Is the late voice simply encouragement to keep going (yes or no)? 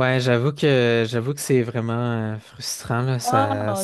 yes